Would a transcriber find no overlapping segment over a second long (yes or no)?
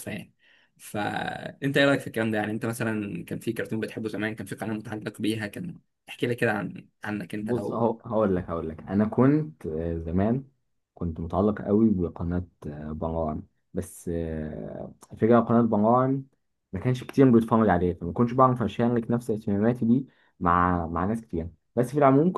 yes